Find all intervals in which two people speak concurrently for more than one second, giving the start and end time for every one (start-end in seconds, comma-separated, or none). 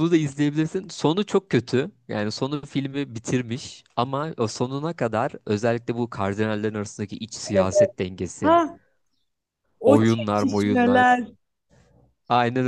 9.8-11.1